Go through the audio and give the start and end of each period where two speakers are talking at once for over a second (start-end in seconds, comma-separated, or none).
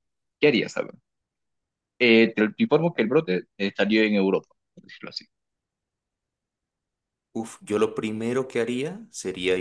none